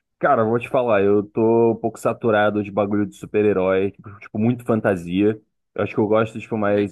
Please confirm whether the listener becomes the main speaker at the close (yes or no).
no